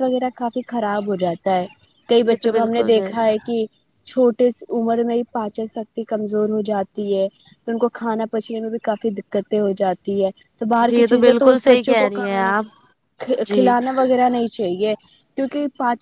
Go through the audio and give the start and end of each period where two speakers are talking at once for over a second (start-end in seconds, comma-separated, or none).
10.9-12.6